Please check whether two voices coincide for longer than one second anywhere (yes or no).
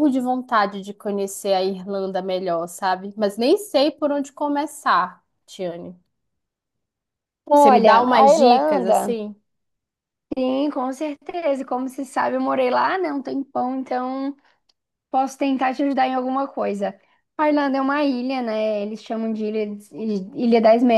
yes